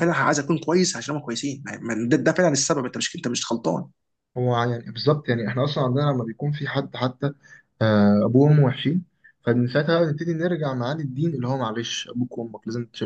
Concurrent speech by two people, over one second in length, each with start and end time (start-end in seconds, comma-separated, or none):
none